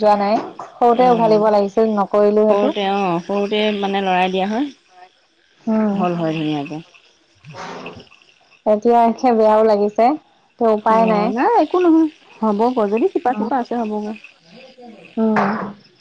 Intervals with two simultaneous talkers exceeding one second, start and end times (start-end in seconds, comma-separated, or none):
none